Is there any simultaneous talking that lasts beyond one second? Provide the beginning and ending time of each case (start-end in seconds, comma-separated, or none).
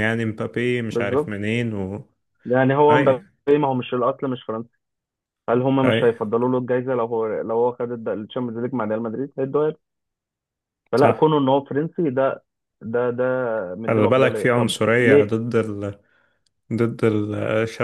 13.9-15.3